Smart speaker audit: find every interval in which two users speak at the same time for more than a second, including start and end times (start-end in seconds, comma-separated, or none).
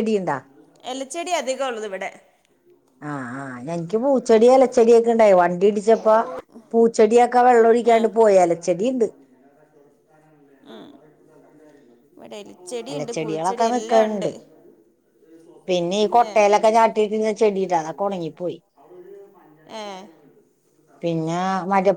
12.9-14.3